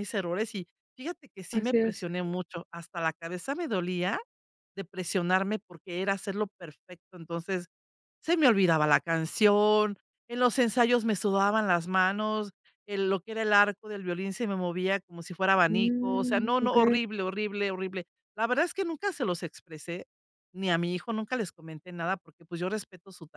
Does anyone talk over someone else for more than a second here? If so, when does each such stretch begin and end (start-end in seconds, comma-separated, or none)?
15.7-16.9